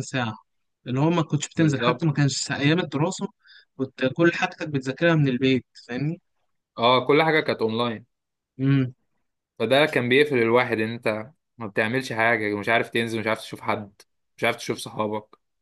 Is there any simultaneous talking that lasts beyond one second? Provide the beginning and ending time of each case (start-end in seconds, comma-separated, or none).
none